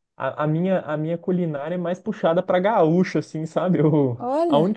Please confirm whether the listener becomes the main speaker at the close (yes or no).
no